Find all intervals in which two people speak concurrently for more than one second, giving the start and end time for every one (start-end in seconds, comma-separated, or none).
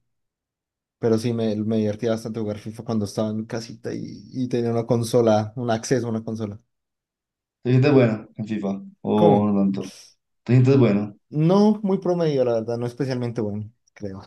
none